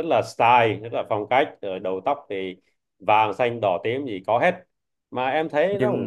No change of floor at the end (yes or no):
no